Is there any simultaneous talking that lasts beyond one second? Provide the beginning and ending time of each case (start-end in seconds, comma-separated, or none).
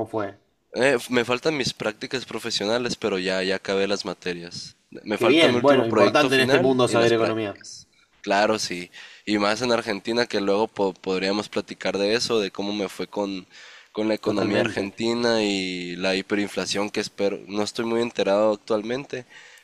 5.1-7.6